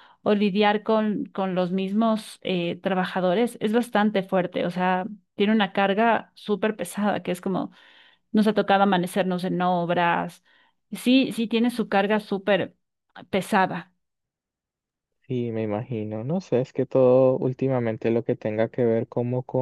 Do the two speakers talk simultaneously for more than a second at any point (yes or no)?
no